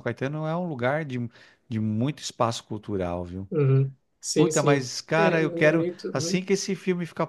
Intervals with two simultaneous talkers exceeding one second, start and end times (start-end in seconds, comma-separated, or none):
4.3-6.5